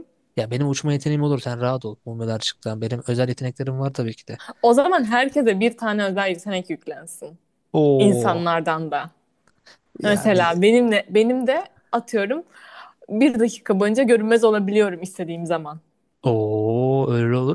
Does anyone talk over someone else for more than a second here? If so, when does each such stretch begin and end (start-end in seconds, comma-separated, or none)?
none